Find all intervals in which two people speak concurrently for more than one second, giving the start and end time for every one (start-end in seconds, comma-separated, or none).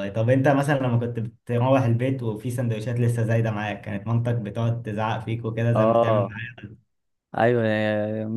none